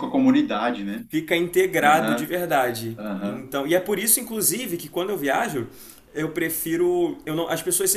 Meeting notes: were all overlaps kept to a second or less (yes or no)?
yes